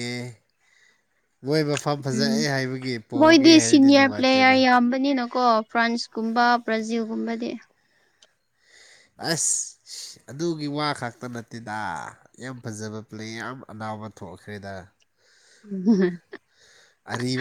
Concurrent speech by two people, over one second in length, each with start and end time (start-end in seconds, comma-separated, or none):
3.2-4.6